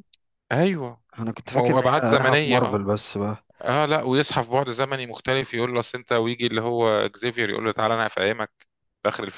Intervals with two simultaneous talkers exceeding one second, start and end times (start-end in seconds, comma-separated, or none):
1.6-2.8